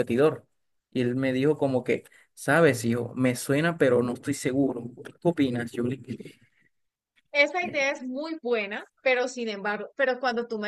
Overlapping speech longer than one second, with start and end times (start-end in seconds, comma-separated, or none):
none